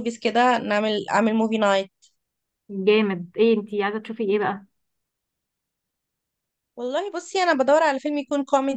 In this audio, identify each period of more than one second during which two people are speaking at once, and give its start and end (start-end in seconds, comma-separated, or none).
none